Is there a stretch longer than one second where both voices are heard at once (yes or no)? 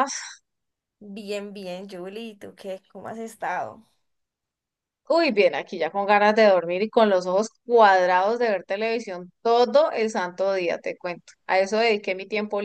no